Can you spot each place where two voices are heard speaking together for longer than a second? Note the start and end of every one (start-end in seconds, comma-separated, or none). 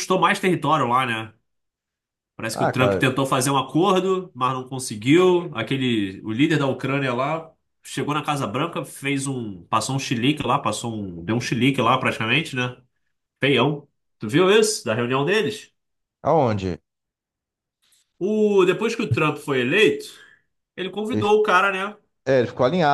none